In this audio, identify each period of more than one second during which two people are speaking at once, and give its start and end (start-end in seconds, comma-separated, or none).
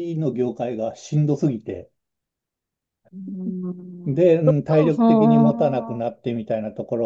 4.4-6.2